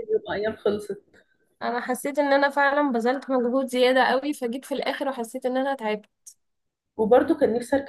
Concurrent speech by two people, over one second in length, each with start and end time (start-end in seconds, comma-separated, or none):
none